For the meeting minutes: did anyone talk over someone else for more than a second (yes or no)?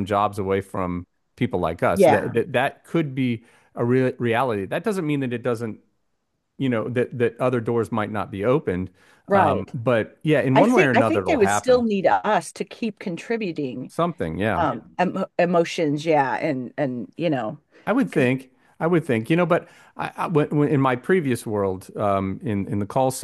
yes